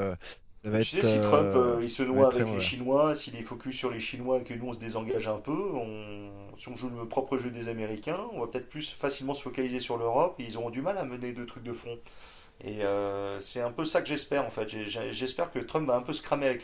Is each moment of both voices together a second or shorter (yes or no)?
no